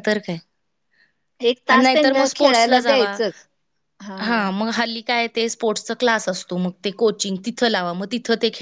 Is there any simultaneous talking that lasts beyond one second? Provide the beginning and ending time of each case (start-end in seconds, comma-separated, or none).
1.7-3.1